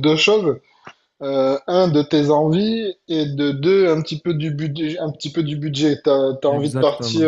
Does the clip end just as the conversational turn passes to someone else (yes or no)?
no